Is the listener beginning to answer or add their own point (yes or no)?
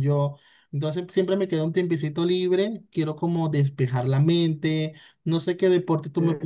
no